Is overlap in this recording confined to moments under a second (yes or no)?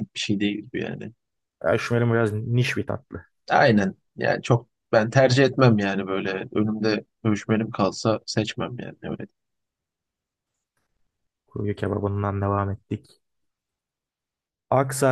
yes